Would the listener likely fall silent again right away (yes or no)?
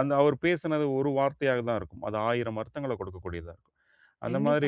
no